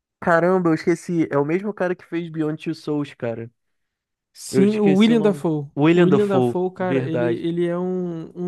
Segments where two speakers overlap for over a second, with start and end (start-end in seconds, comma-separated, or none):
4.5-7.5